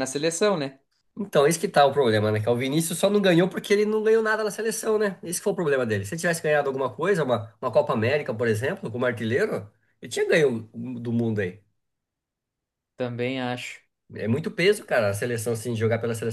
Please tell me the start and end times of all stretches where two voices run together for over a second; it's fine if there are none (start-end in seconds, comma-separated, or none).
none